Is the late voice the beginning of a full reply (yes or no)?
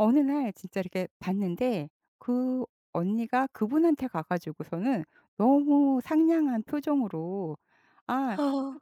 no